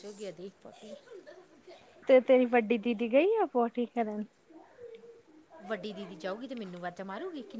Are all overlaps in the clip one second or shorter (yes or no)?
yes